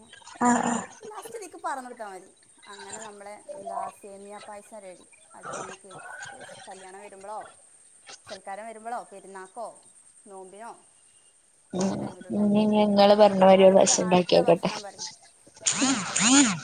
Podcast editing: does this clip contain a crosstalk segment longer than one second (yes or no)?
yes